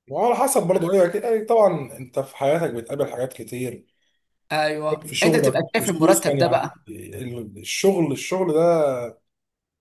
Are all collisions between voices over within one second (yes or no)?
no